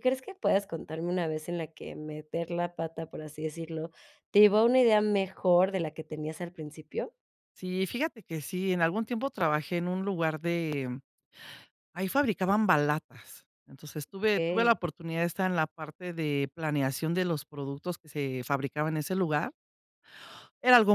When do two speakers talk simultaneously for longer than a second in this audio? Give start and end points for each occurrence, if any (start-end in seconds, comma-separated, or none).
none